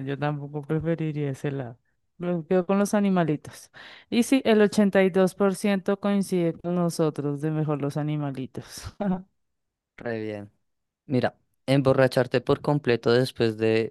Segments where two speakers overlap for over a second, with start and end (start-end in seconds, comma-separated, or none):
none